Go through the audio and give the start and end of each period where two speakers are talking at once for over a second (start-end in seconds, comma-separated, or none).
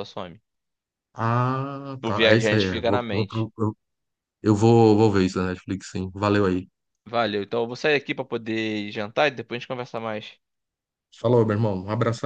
2.0-3.5